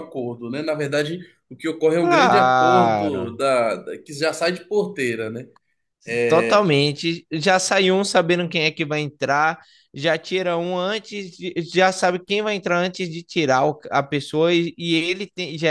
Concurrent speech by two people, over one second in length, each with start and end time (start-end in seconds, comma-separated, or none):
2.0-3.3